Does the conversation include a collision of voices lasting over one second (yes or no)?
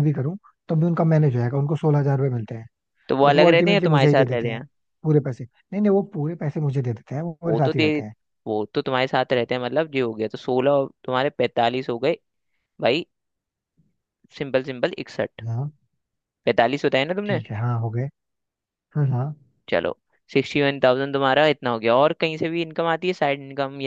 yes